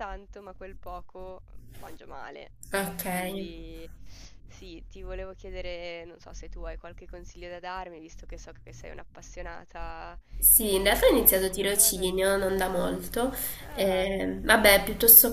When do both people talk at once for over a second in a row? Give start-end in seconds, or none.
10.6-12.1